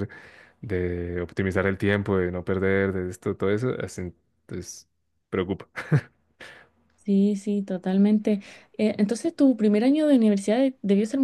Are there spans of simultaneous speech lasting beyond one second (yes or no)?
no